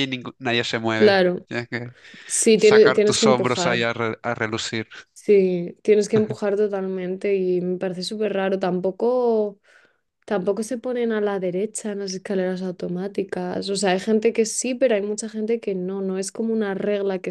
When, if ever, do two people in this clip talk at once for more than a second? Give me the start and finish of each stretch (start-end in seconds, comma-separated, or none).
2.6-3.9